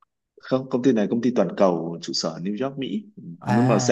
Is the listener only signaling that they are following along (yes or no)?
yes